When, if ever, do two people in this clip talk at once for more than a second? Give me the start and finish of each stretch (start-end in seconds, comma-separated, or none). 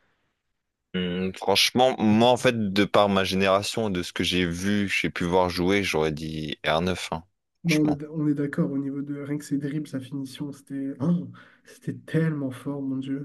none